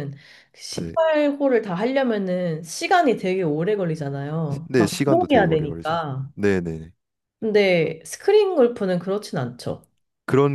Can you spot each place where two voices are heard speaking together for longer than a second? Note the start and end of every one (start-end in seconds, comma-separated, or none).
4.5-6.0